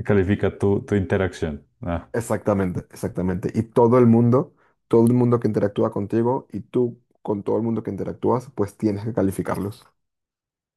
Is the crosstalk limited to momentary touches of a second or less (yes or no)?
yes